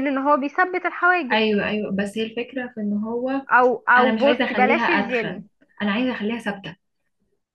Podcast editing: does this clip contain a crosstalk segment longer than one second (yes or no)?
yes